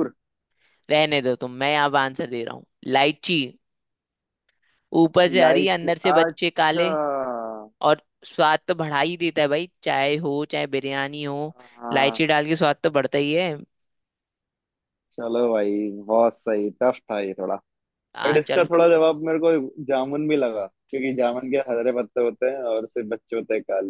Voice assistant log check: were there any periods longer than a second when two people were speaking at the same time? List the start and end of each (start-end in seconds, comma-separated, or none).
5.3-6.8